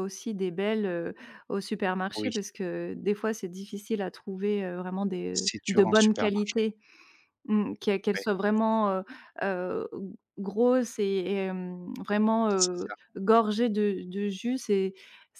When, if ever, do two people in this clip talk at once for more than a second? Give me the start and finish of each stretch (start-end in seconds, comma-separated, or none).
5.3-6.6